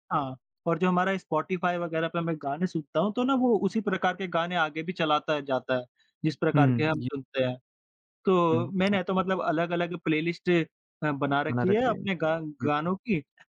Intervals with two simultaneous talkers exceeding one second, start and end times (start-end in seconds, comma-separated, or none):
none